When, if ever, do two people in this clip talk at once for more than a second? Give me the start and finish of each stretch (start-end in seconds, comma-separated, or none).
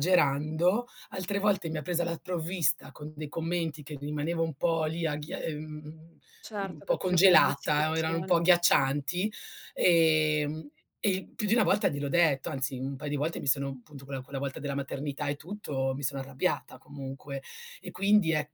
6.6-8.3